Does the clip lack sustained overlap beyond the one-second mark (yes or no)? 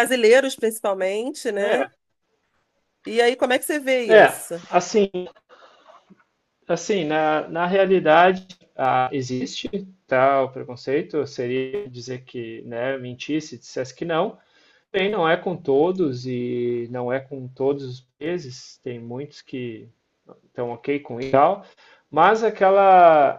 yes